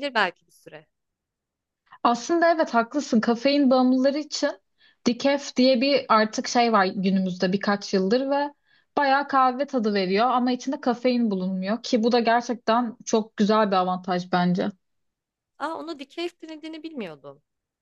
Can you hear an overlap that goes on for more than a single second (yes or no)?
no